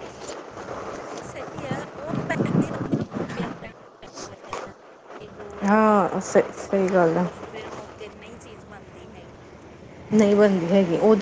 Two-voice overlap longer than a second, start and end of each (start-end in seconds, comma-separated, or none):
5.7-7.2